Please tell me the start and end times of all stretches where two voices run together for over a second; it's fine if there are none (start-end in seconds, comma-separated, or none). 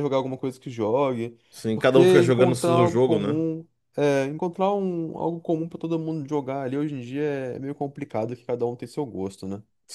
1.7-3.4